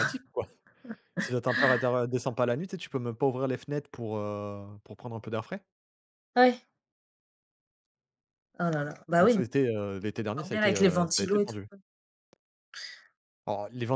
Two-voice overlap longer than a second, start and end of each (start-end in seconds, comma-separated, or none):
10.4-11.6